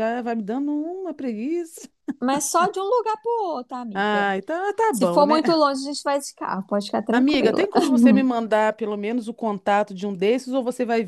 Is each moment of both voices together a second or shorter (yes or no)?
yes